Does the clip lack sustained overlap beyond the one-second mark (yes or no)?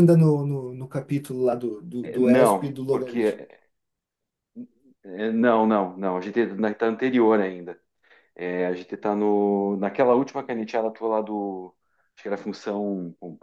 no